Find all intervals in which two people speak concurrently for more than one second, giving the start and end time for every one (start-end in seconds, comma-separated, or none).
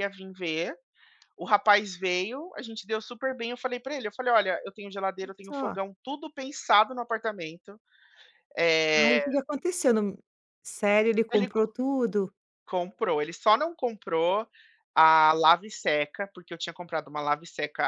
none